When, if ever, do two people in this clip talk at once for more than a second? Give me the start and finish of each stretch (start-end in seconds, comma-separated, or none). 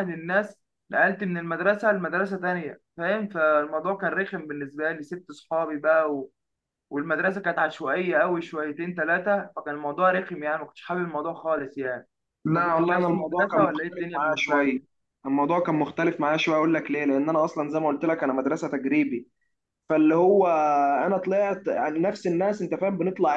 12.5-14.8